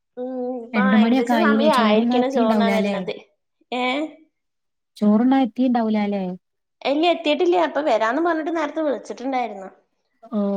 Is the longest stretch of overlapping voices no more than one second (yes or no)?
no